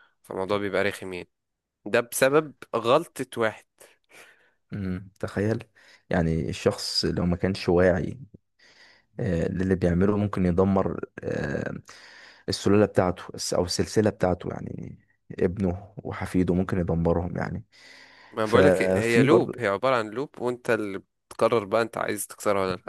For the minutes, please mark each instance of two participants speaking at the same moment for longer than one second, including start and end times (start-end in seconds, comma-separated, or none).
18.4-19.6